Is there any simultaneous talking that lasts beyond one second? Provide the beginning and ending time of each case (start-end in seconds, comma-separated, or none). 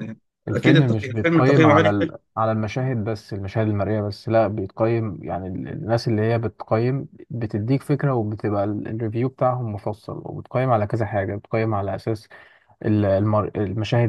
0.6-2.1